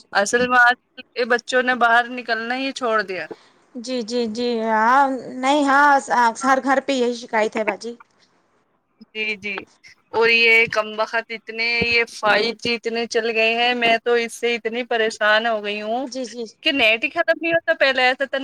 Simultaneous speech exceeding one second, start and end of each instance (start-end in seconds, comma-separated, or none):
none